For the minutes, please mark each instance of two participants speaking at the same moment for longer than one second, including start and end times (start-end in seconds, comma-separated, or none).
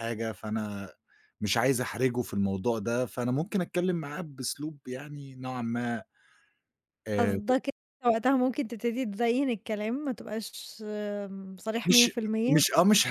none